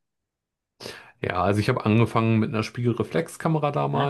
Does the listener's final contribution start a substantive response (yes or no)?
no